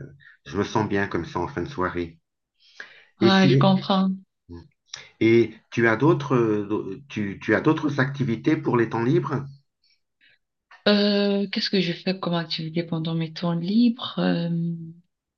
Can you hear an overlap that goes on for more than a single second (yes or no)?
no